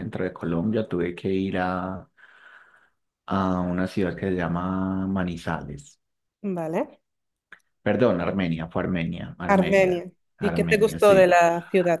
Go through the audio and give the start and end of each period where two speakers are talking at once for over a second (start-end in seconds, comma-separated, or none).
9.5-11.3